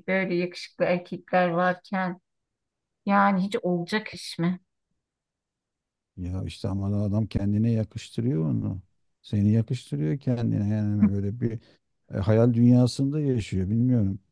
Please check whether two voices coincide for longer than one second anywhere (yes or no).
no